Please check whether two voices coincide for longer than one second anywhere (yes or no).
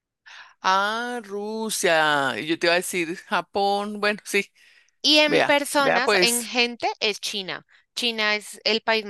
yes